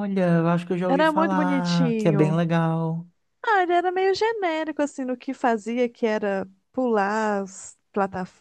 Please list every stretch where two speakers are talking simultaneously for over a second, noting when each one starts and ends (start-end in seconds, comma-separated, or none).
0.9-2.4